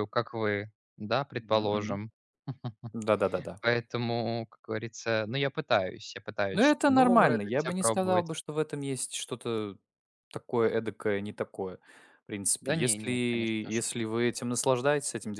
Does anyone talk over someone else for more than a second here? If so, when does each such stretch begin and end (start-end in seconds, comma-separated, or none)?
6.5-8.3, 12.6-13.9